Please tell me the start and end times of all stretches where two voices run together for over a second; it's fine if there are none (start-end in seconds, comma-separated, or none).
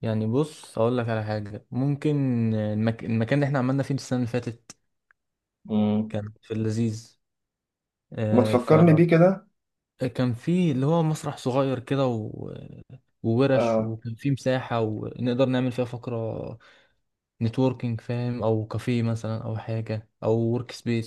none